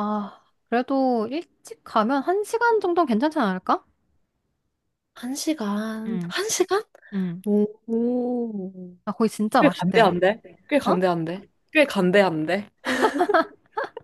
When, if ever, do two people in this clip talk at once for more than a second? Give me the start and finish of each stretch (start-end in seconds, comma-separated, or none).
none